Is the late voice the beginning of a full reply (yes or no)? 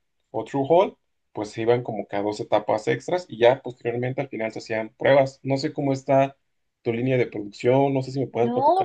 yes